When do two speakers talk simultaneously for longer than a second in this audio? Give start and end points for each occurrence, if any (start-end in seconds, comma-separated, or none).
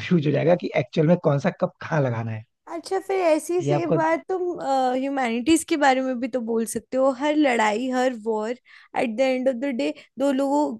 none